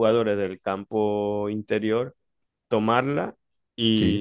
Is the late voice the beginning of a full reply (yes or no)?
no